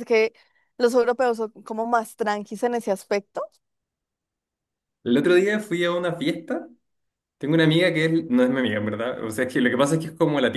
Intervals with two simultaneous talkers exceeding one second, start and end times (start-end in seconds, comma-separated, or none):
none